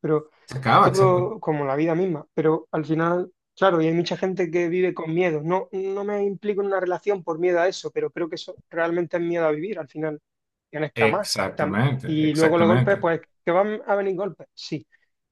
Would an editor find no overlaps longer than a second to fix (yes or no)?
no